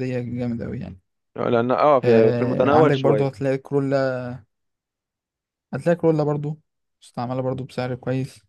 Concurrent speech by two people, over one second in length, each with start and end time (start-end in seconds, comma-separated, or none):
2.0-3.4